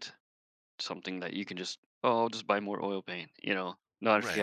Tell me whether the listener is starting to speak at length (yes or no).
yes